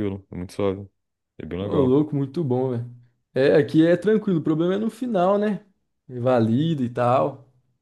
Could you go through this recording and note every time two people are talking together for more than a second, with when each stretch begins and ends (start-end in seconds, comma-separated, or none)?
none